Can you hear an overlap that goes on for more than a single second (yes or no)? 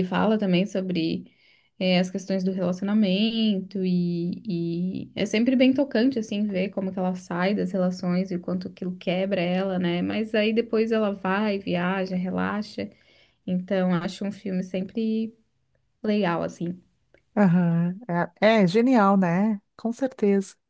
no